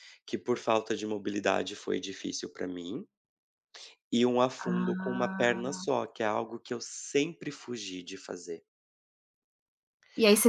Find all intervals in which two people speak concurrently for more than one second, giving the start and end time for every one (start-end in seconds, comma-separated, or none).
4.6-5.8